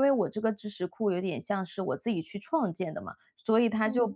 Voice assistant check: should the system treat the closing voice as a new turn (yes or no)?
no